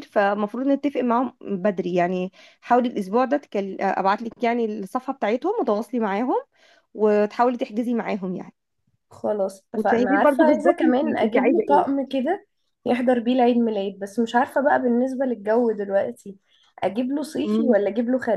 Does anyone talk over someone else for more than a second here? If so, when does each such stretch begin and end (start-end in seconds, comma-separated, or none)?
9.8-11.8